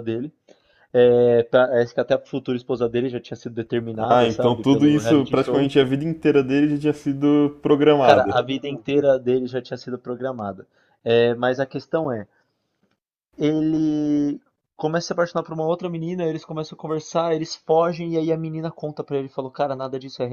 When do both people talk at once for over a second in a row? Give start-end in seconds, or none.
4.1-5.7